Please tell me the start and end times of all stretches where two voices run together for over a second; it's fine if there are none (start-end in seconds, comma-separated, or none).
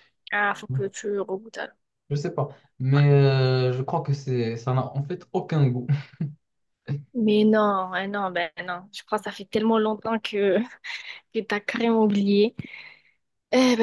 none